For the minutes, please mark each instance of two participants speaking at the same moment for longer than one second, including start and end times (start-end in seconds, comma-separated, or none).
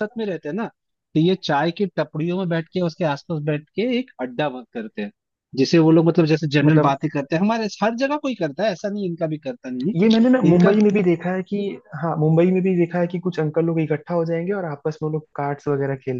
none